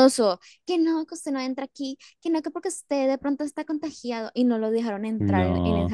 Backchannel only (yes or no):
yes